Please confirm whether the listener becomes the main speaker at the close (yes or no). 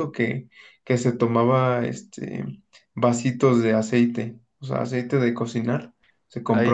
no